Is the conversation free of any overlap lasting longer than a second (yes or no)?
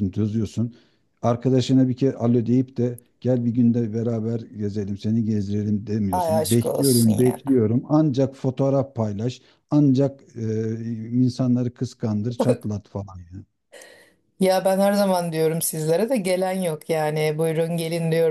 no